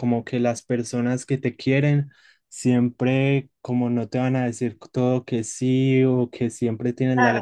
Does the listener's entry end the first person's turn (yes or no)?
no